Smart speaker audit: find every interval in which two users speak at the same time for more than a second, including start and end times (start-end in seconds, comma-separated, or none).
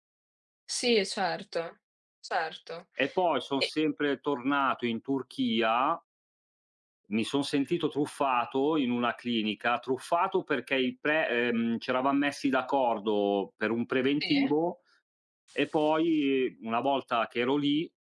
none